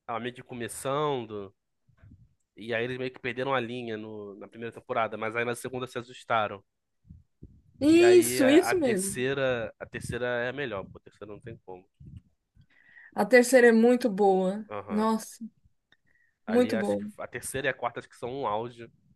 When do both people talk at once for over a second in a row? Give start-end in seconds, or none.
7.9-9.2